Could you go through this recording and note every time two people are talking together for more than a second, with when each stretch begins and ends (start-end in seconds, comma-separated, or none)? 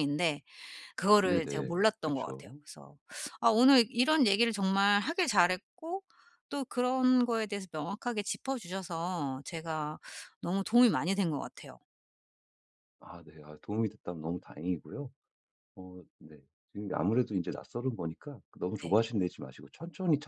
1.2-2.6